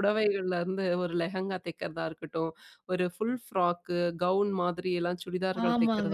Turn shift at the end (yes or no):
yes